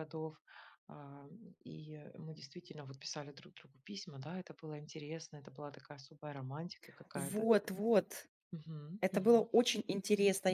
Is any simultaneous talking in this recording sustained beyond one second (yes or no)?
no